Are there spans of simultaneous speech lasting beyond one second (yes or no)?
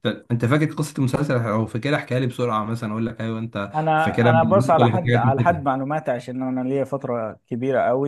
yes